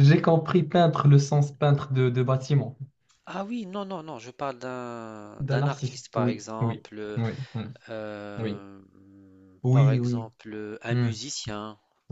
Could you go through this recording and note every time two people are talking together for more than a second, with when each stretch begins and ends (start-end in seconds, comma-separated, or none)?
5.4-7.2